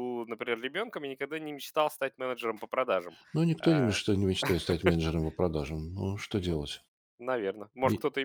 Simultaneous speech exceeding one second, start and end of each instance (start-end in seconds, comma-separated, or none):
none